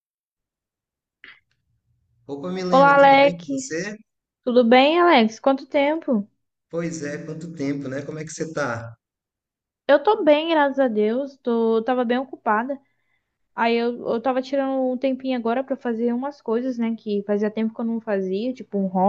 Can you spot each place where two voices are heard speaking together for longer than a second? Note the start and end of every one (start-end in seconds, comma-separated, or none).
2.7-4.0